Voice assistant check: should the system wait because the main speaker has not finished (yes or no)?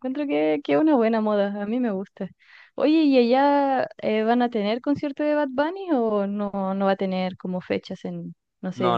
no